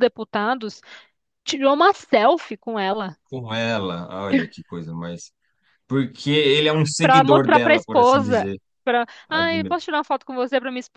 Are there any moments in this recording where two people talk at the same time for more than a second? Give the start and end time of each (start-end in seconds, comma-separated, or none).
7.0-8.5